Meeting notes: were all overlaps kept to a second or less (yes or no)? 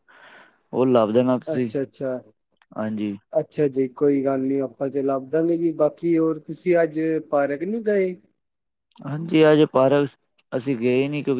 yes